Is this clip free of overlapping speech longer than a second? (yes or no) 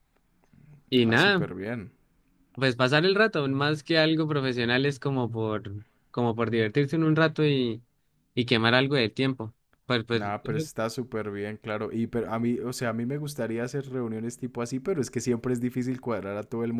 yes